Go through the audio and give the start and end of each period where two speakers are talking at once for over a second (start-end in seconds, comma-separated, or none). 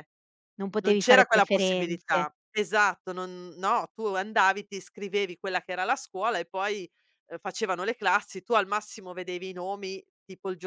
0.8-2.3